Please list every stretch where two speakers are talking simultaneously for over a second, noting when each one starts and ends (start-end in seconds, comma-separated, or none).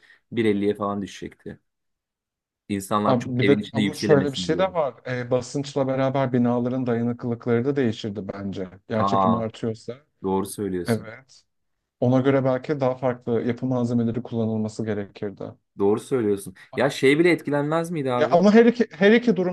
3.0-4.7